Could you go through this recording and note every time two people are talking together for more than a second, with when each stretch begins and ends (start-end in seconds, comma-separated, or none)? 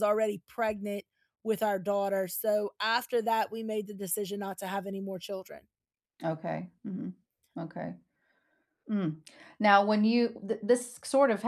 none